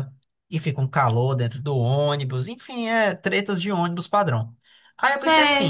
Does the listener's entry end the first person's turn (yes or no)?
yes